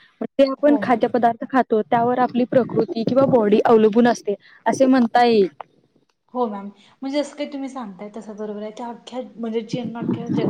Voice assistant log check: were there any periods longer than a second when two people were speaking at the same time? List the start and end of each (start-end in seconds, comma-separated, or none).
none